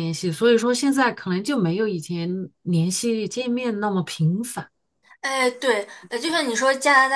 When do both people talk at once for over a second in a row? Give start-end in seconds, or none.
none